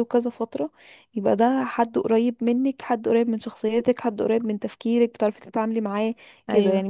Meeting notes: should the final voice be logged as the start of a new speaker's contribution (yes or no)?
no